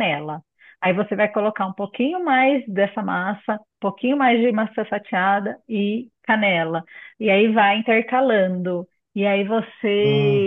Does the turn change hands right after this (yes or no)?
no